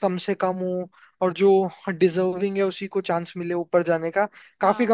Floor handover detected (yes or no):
no